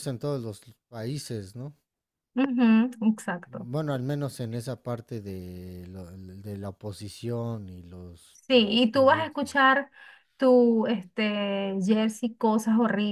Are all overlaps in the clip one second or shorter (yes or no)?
no